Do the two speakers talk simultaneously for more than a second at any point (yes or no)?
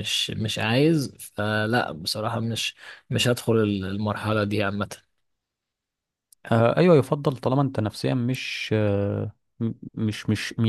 no